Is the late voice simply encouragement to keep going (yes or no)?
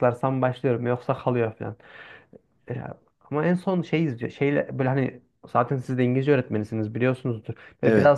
yes